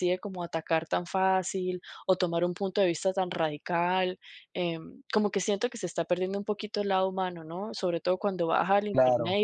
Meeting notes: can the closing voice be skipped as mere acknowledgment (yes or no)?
yes